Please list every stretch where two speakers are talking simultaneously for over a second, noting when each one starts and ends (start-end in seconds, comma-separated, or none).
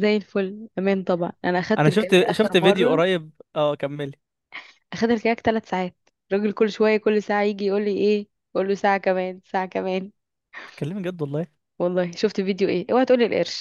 1.8-3.0